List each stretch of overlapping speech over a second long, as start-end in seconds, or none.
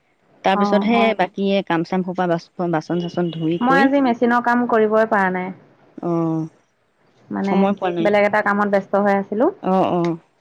none